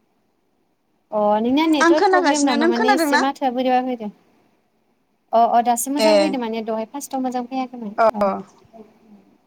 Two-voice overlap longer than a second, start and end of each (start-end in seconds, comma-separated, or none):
1.8-3.2